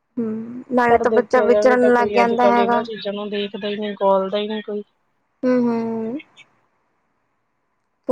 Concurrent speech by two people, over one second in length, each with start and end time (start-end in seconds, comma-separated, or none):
0.9-2.8